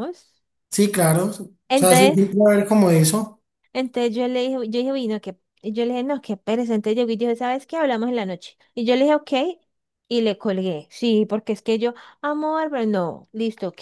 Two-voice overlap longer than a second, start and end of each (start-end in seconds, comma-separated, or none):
none